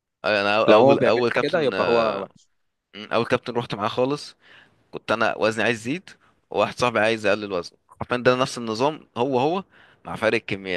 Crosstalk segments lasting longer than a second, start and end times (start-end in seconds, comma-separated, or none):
0.7-2.1